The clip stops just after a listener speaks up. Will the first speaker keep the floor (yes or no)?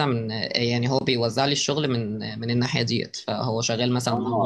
no